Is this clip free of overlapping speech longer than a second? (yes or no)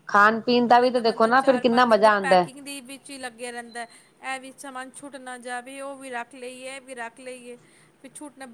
no